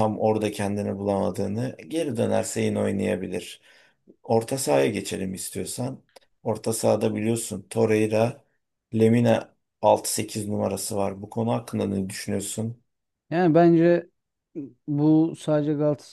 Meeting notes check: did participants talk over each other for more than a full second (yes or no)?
no